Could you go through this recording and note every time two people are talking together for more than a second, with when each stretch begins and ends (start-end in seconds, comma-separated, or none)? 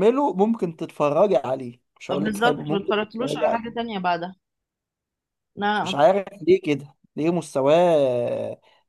2.1-3.8